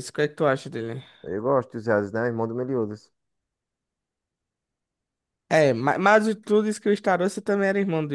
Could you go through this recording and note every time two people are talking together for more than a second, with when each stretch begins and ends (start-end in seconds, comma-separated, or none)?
none